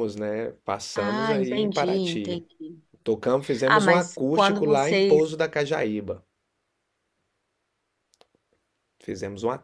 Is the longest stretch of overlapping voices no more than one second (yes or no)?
no